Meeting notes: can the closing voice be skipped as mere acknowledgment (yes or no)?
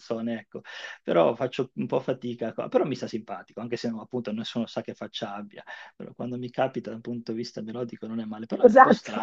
no